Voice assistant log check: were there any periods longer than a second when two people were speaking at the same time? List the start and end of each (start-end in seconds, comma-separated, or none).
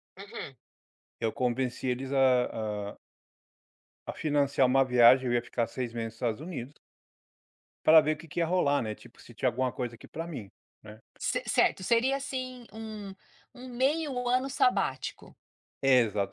none